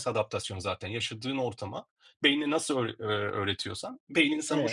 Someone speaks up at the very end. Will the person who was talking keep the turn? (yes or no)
no